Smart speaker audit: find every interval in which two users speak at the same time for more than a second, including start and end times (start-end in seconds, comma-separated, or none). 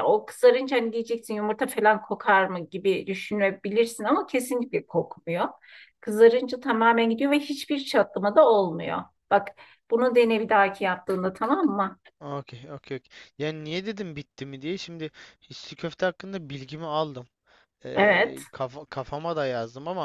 none